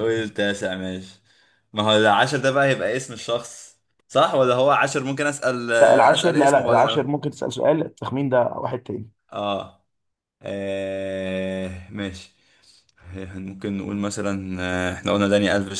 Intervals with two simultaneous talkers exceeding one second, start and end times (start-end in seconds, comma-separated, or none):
5.8-7.0